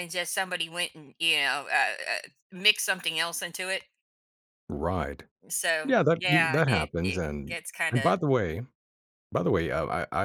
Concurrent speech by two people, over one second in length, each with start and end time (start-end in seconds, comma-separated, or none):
5.8-8.2